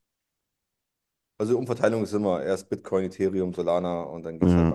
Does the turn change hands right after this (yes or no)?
yes